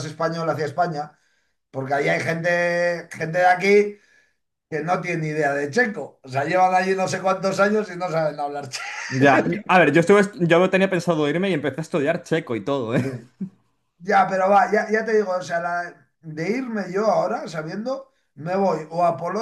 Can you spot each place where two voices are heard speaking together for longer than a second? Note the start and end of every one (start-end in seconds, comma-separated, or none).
none